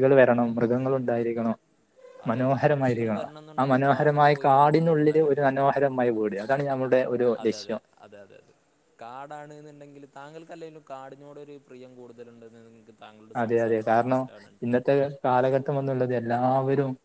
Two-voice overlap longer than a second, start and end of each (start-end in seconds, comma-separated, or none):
2.3-5.6